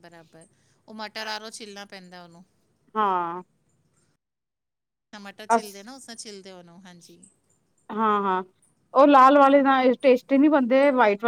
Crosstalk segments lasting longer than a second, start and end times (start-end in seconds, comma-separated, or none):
none